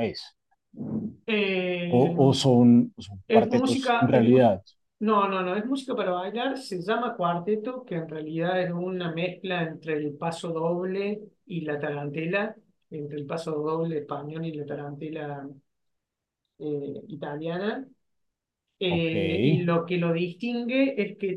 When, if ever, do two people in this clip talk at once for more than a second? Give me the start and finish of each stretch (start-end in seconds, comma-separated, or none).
3.3-4.5